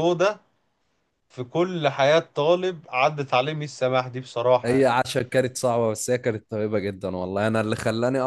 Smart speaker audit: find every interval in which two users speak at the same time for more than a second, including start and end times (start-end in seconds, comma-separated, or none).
none